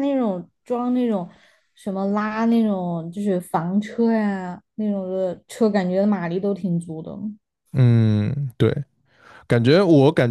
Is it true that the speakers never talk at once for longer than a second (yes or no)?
yes